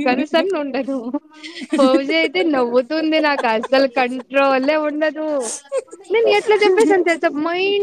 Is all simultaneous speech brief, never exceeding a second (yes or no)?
no